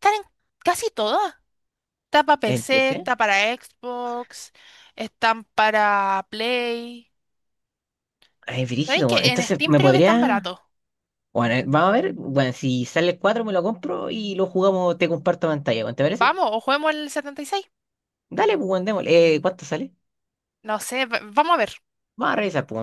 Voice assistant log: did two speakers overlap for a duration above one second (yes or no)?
yes